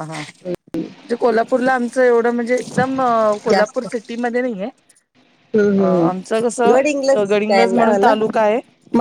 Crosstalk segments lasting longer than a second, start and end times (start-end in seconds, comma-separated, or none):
6.7-8.1